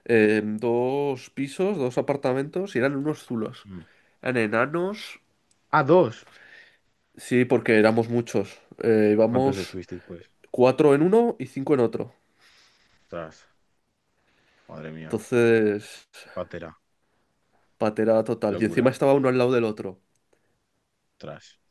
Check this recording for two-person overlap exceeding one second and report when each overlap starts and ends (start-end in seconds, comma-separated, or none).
none